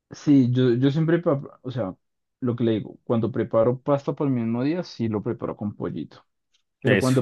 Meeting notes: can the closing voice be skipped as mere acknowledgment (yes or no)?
yes